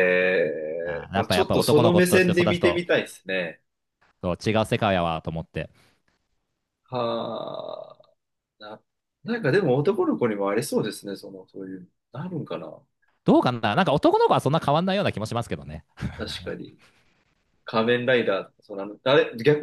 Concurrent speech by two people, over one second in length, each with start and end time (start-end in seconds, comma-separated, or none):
0.8-2.8